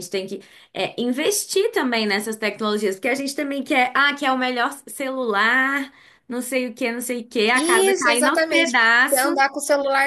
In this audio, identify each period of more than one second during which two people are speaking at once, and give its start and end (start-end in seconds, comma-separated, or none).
7.5-9.3